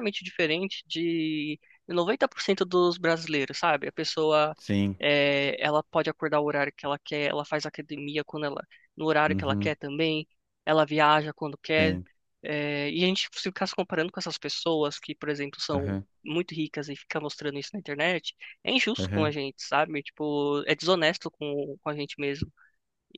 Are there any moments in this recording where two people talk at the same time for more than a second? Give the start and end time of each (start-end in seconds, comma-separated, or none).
none